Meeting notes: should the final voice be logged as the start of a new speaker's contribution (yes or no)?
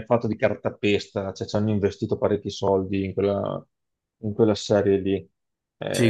yes